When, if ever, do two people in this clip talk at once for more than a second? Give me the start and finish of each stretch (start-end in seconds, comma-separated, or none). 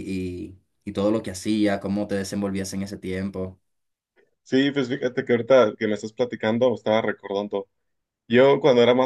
none